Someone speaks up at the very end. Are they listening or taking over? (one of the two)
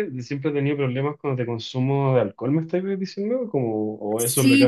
taking over